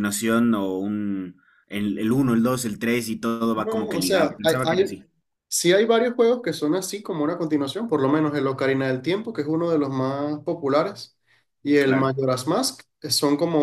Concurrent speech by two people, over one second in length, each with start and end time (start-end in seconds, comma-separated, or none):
3.5-4.9